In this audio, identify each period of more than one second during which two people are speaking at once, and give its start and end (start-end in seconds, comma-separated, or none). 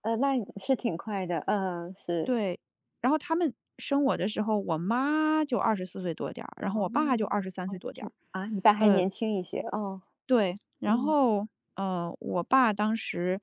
none